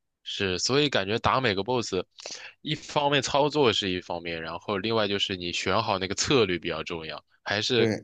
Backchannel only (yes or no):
yes